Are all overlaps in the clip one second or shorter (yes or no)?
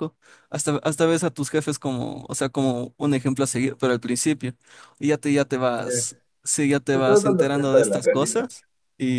no